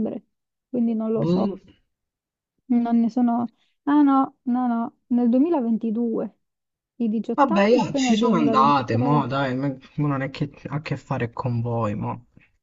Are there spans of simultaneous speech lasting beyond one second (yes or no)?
yes